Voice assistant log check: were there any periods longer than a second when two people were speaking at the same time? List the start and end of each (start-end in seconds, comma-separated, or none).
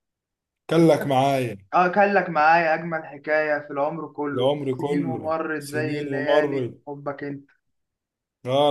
4.3-6.8